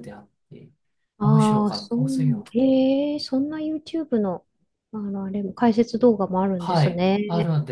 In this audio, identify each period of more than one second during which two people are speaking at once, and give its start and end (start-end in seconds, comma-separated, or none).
1.2-2.4